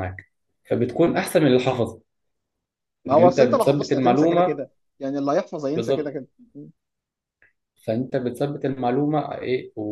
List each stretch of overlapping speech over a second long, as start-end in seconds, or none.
3.1-4.6